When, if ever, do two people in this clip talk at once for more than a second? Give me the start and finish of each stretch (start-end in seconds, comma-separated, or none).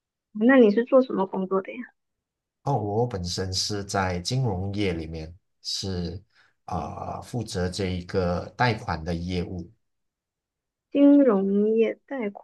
none